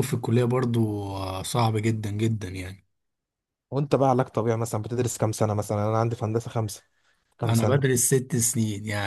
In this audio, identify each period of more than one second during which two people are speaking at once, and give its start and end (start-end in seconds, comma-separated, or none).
none